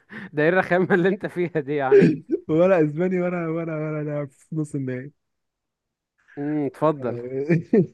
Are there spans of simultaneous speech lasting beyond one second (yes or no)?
no